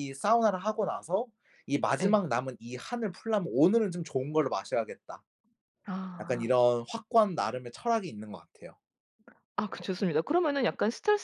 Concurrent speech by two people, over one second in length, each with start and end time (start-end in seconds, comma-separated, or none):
none